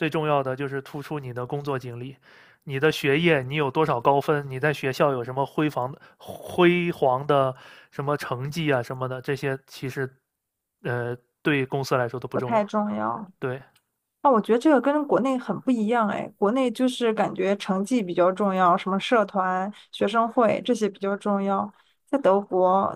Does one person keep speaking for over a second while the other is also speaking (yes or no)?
no